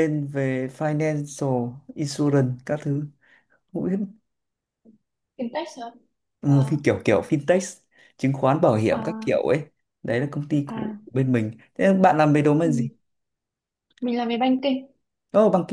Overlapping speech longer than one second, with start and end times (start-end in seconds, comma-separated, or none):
none